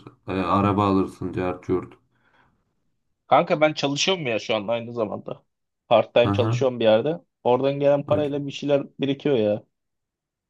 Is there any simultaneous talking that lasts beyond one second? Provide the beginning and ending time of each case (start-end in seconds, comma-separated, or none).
none